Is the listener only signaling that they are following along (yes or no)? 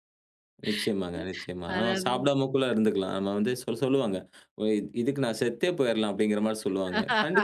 yes